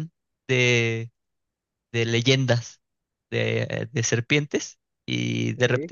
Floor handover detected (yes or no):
no